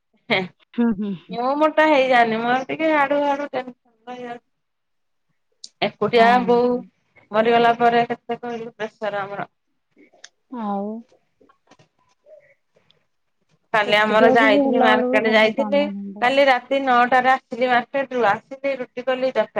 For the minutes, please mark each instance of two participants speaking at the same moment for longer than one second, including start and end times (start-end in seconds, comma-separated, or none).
13.9-15.8